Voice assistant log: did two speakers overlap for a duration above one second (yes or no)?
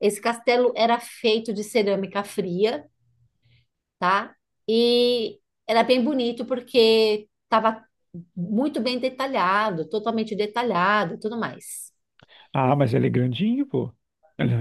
no